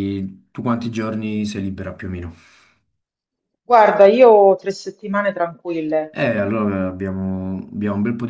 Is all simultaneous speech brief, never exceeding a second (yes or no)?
yes